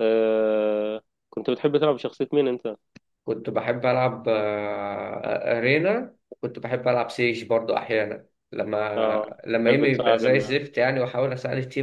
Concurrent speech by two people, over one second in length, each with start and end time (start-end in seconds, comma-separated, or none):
9.0-10.6